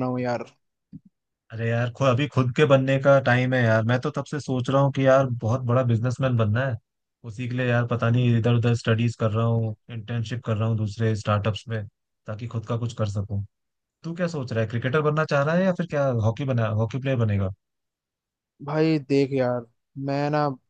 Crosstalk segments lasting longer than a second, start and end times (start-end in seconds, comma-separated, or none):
none